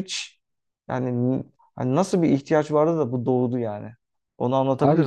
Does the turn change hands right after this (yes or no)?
yes